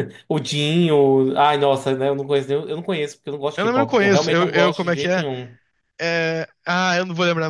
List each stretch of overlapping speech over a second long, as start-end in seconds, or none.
3.6-5.2